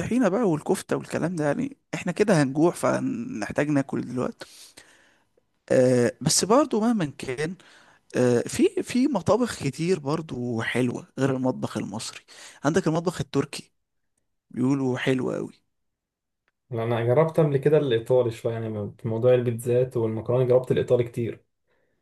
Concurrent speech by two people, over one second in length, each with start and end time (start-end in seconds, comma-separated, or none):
none